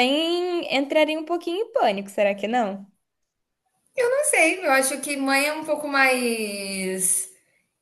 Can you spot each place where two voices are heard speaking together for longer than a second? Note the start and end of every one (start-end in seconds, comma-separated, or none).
none